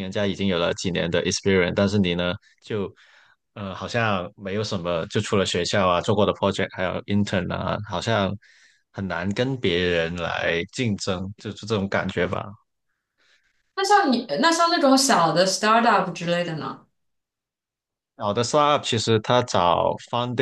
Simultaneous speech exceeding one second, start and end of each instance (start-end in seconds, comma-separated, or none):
none